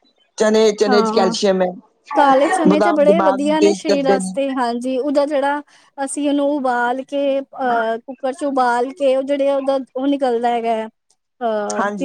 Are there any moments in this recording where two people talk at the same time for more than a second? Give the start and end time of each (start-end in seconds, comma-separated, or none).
2.7-4.3